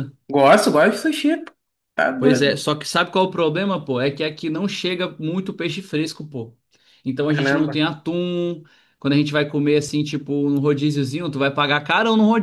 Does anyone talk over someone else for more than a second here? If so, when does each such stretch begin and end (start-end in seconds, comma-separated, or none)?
none